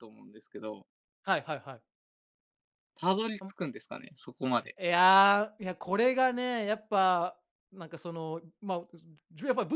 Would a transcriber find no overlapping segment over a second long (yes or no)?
yes